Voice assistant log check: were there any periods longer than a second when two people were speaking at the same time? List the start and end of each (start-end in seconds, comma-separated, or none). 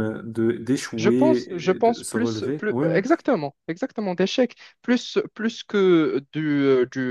1.0-3.0